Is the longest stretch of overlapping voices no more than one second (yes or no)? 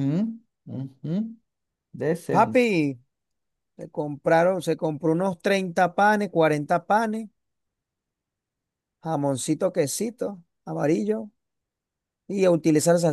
yes